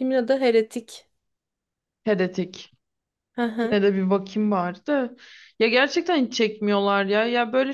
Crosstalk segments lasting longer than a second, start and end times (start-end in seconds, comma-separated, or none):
none